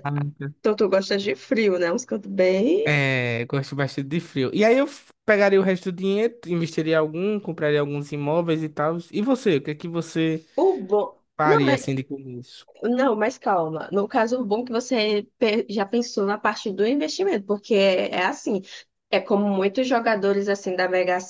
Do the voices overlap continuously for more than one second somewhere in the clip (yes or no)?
no